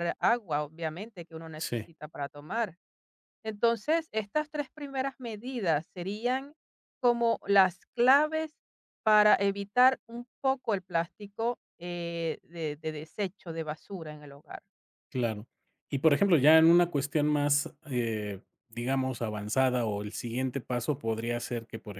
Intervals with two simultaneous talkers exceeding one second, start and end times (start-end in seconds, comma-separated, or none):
none